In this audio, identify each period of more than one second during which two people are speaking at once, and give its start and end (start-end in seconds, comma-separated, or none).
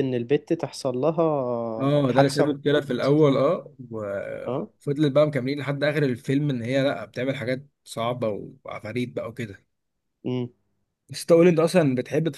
1.8-3.1